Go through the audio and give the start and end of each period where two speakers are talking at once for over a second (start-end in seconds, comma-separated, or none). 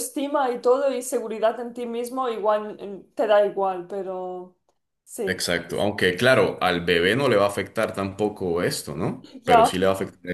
none